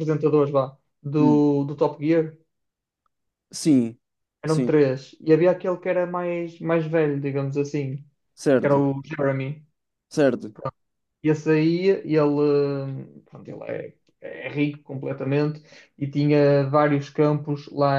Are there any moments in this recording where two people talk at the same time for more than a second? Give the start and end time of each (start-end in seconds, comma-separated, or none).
none